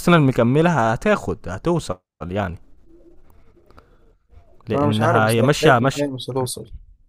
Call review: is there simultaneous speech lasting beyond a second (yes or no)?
yes